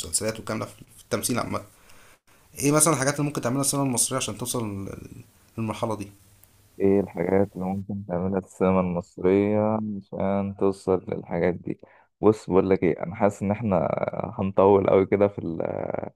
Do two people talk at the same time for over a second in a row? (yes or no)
no